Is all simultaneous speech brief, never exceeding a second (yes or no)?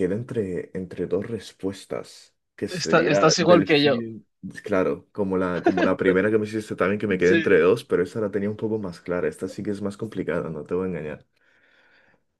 no